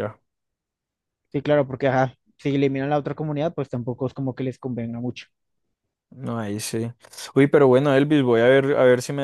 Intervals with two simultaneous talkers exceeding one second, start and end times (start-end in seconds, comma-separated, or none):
none